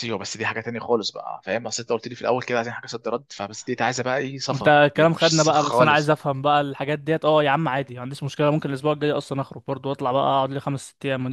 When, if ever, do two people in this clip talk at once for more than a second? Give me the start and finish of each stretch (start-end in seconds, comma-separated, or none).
4.5-6.1